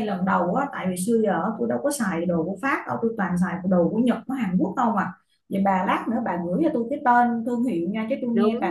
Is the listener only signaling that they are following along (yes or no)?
no